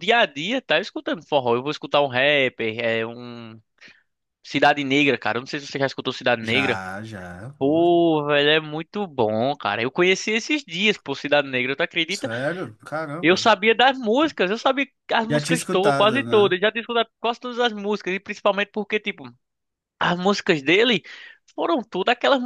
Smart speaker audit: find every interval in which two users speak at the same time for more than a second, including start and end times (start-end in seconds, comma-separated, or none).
15.3-16.6